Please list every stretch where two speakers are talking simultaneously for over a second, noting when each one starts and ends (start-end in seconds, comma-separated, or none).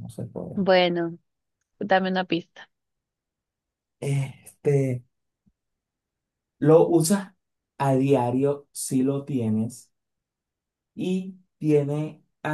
none